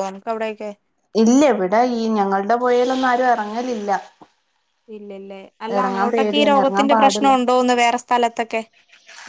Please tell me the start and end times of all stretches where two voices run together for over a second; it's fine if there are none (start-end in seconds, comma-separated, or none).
5.8-7.3